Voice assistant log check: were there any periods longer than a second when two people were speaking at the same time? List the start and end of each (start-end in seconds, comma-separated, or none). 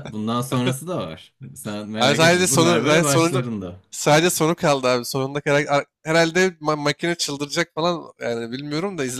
2.0-3.4